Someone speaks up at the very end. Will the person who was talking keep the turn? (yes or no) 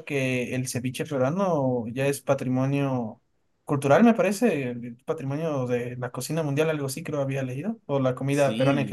no